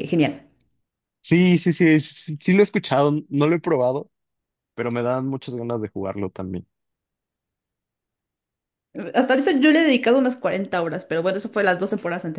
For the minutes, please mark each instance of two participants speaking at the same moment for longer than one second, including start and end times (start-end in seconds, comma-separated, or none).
none